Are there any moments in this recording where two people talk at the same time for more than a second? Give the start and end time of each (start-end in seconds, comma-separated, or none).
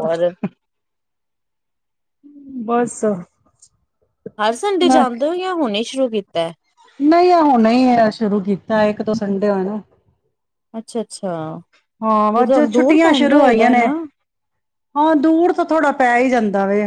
none